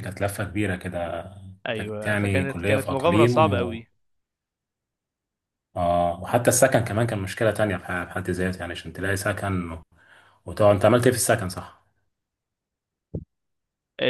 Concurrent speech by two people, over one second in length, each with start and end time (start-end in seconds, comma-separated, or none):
1.7-3.8